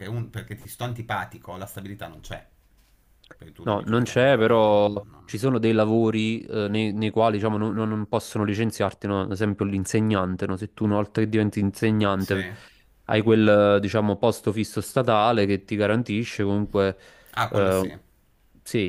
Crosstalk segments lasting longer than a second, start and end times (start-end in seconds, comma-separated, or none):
3.6-5.4